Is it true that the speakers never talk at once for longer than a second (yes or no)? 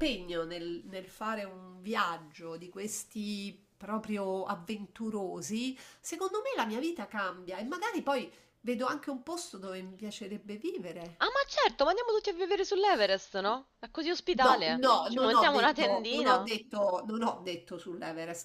no